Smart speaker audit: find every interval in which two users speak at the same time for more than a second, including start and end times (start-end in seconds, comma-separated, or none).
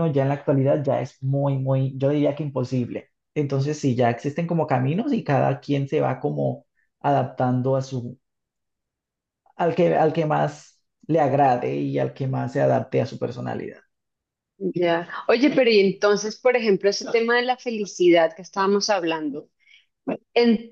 none